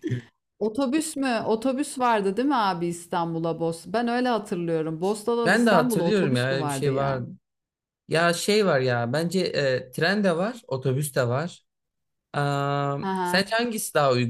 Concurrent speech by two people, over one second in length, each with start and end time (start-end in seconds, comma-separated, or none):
5.5-7.2